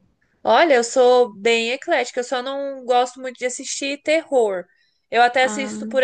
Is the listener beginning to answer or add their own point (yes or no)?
no